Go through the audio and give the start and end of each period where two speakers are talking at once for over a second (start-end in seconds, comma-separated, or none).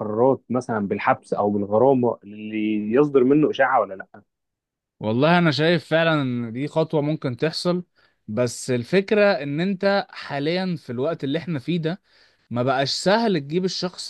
none